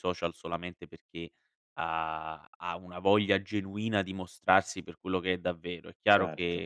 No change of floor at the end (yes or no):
yes